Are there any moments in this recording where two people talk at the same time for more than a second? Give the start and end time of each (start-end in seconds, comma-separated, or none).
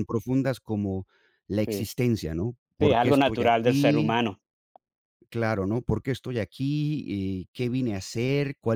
2.8-4.2